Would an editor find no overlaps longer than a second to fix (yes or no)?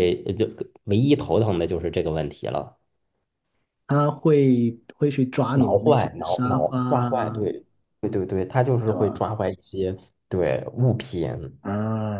no